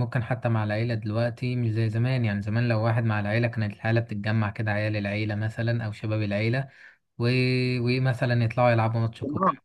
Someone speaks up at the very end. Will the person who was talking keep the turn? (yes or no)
yes